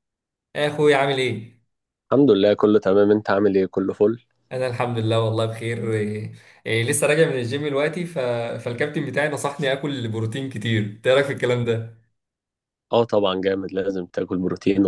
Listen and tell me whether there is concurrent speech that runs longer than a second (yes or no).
no